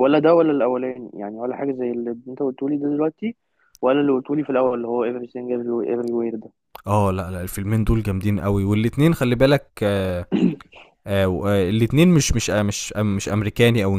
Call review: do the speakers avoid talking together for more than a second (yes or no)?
yes